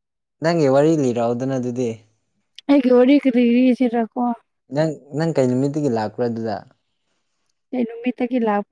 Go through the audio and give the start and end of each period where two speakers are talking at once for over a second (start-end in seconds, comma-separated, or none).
none